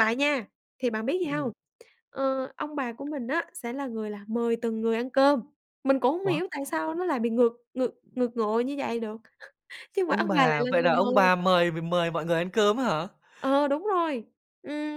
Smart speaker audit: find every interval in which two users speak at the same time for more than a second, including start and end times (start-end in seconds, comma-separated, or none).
10.1-11.3